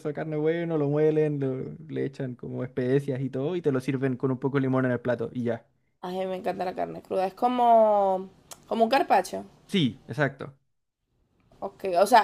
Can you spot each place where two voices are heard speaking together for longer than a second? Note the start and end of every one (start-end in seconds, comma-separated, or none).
none